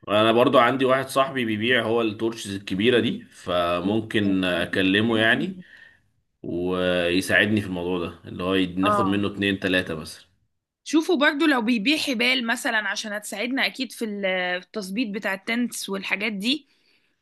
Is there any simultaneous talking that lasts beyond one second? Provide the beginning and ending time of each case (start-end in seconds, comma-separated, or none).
none